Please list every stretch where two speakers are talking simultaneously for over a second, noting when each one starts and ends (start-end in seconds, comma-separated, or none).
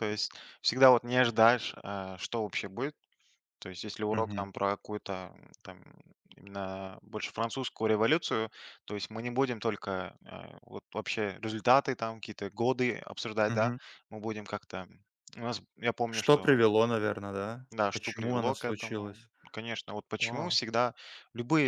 17.7-19.3